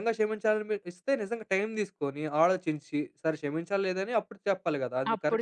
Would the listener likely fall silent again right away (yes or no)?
no